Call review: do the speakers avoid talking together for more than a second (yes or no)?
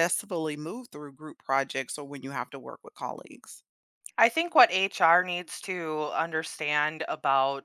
yes